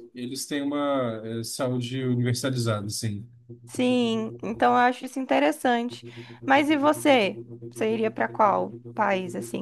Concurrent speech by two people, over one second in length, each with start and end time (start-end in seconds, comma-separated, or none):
none